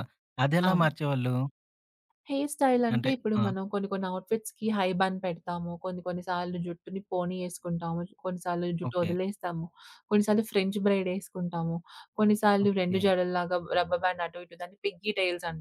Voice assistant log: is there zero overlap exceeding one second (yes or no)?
yes